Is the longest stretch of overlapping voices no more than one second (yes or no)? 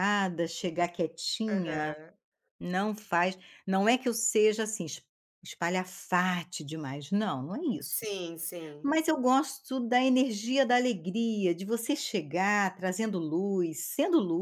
yes